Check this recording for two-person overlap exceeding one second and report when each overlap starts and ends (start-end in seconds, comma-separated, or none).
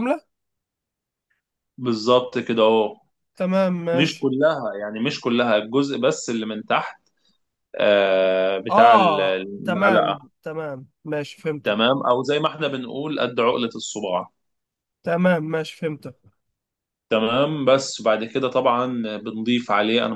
8.7-10.3